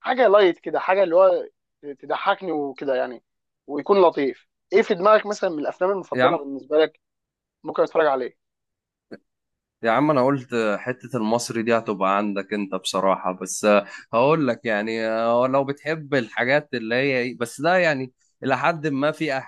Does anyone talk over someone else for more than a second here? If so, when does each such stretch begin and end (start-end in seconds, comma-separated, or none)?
none